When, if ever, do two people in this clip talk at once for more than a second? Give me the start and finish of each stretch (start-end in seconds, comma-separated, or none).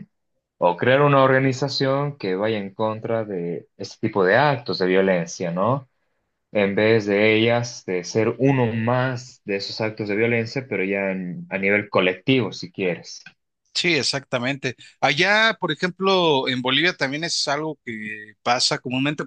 none